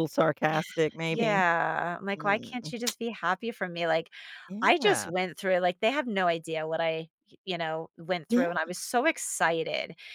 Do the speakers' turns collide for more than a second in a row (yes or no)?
no